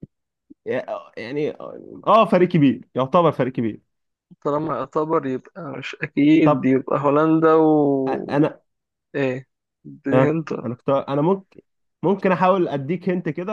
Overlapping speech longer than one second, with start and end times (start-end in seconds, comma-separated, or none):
none